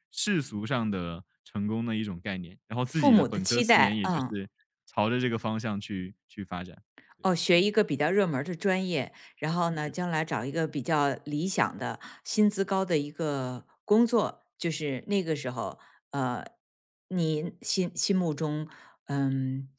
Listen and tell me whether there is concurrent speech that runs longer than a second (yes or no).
yes